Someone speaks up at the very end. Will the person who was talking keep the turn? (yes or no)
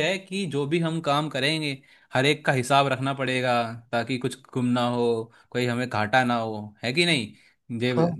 yes